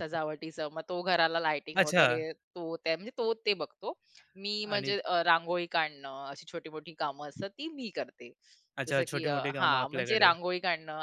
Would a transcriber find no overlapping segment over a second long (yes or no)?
no